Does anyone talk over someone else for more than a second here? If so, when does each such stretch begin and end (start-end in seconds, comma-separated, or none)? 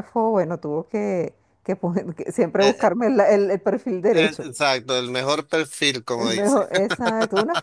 none